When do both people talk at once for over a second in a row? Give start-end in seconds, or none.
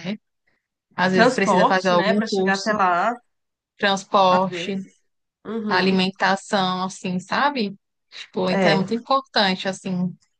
1.1-2.7